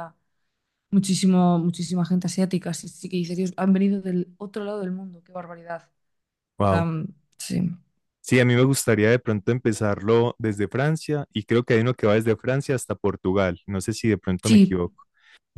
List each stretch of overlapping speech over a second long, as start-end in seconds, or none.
none